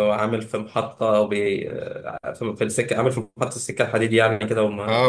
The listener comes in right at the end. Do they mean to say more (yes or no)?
yes